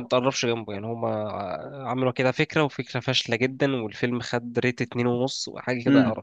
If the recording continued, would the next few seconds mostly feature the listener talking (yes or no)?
yes